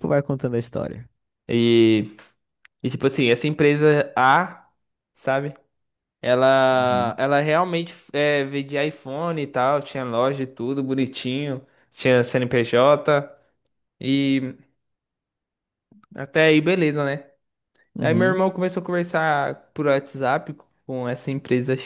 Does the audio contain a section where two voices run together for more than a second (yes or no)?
no